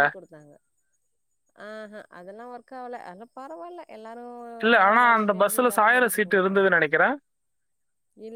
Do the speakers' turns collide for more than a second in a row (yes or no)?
yes